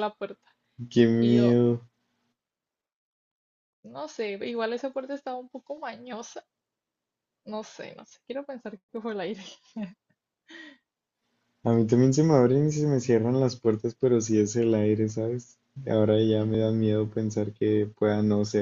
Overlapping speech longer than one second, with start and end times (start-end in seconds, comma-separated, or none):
none